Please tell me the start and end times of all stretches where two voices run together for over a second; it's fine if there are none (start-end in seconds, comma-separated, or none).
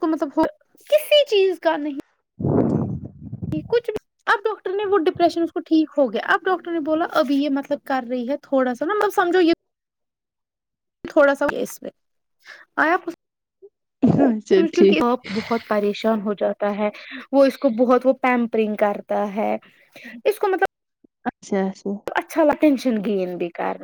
none